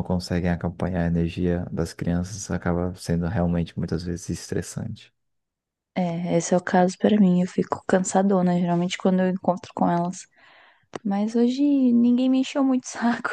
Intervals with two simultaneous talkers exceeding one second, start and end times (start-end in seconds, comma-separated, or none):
none